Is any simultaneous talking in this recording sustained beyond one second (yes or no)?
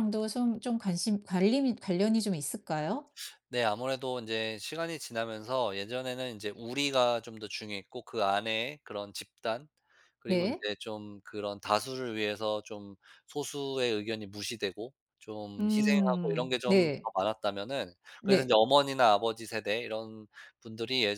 yes